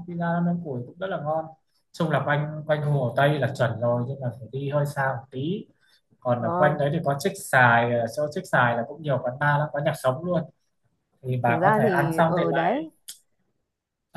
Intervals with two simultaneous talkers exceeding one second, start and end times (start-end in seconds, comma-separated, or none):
11.4-12.8